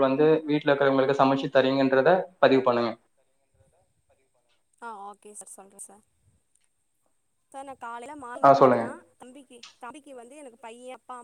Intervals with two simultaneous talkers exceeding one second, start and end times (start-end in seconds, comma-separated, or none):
none